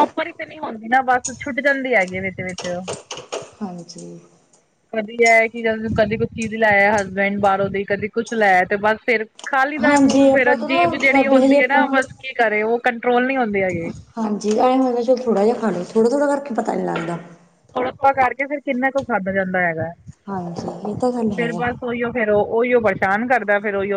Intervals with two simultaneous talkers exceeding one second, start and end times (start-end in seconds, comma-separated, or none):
9.8-11.8